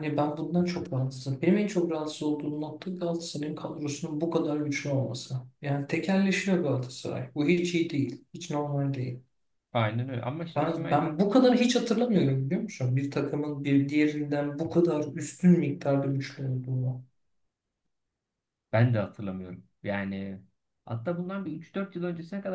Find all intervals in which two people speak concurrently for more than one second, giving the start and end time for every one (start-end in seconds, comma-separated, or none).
none